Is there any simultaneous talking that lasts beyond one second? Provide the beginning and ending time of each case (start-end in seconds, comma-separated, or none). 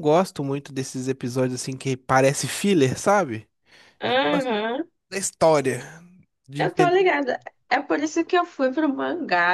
none